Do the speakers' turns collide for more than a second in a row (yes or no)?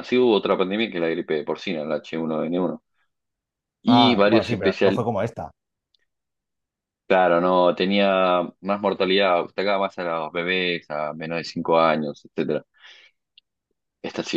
yes